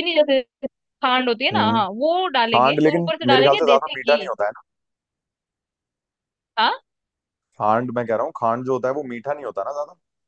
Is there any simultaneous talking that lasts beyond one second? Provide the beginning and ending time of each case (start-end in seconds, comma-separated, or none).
2.5-4.2